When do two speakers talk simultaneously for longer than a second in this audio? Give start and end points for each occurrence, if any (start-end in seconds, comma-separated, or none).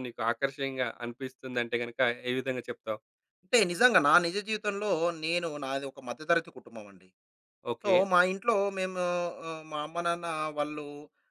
none